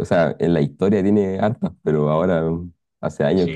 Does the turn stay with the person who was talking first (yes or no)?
no